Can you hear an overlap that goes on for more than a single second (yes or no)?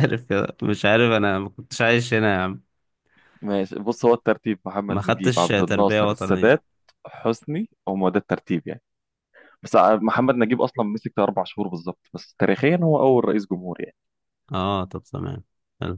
yes